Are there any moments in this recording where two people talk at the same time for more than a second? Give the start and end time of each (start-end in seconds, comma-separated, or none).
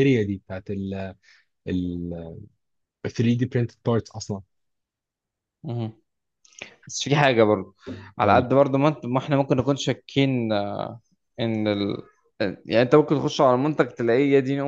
none